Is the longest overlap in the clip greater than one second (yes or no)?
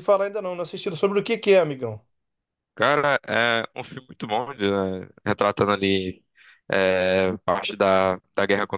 no